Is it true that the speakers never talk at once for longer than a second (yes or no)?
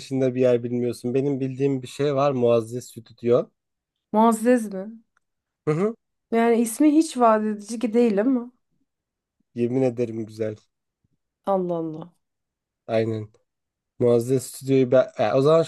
yes